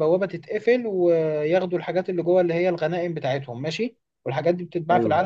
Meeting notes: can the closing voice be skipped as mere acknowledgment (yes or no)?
yes